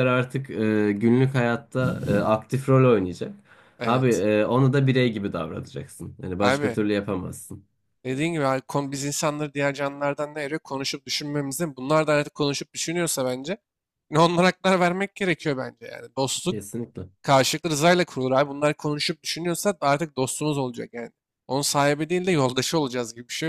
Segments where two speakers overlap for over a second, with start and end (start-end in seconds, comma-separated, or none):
none